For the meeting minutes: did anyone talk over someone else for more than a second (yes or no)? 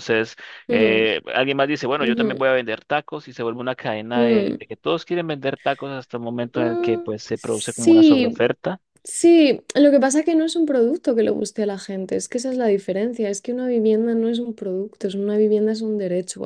yes